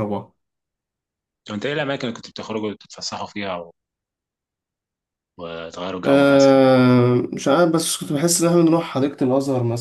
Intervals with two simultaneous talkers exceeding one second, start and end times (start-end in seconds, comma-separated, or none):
none